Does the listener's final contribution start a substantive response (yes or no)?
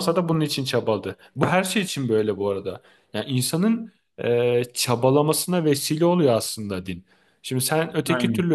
no